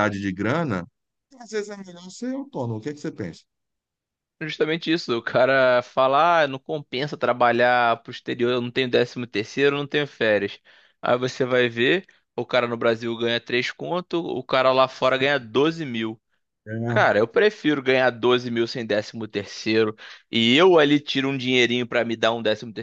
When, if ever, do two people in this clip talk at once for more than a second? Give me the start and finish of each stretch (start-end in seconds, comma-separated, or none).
none